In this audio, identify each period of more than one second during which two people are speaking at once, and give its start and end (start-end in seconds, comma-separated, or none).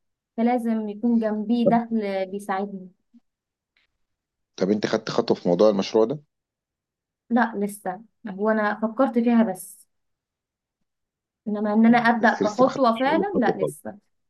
11.9-13.8